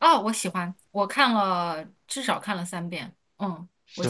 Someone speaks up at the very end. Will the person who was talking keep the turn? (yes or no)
no